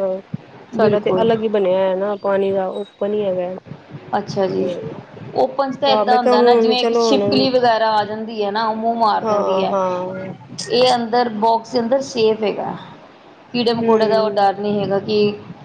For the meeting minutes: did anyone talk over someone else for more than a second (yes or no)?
yes